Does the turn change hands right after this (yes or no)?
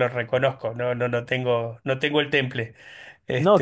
yes